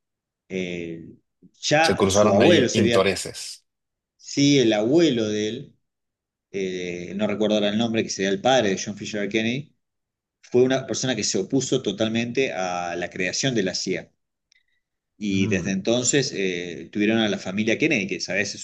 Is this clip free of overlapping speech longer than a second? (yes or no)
no